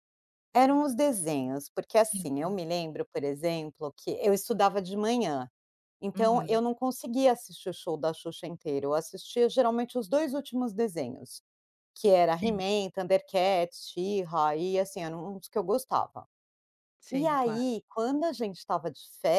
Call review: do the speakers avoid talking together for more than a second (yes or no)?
yes